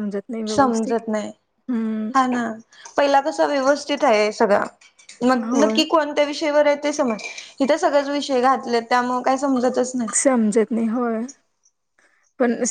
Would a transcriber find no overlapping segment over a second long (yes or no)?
yes